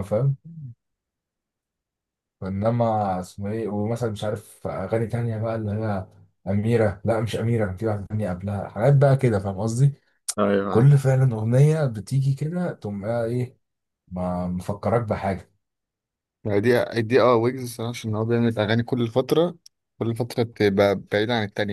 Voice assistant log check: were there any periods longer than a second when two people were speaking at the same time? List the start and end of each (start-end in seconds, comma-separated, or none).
none